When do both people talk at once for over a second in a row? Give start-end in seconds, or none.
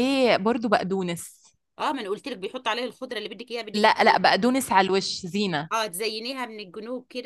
none